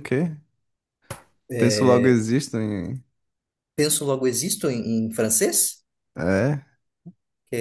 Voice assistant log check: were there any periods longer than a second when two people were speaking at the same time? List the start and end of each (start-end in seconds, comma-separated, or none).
none